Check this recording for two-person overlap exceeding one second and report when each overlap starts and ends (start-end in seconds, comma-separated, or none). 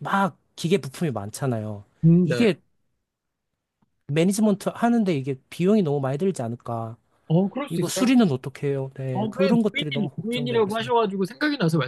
9.1-10.8